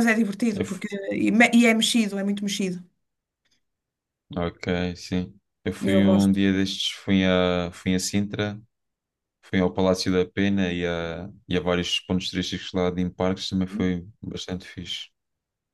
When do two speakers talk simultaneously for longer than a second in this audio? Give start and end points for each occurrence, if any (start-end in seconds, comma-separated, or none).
none